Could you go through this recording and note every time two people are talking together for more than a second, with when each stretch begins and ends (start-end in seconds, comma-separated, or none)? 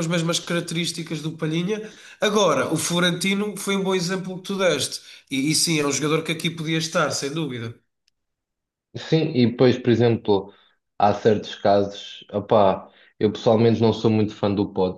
none